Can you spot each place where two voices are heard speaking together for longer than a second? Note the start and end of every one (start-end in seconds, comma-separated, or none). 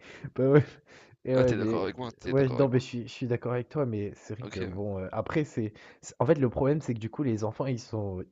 1.3-2.8